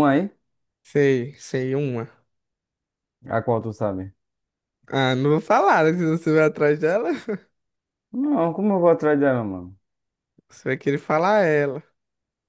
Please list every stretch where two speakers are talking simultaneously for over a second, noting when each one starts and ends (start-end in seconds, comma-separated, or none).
none